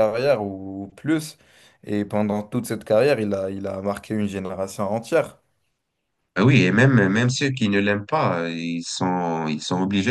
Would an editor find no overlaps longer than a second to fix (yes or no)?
yes